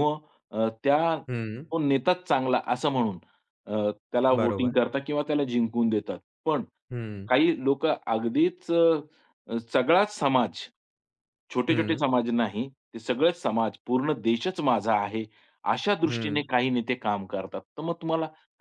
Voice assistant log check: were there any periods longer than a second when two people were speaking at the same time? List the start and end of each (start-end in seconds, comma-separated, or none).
none